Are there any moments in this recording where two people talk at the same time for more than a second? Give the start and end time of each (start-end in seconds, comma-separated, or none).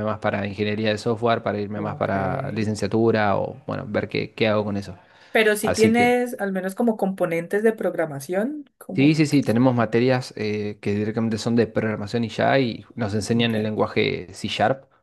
none